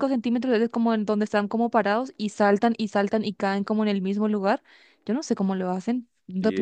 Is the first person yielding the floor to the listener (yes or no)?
yes